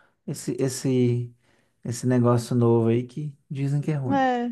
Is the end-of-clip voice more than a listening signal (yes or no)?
yes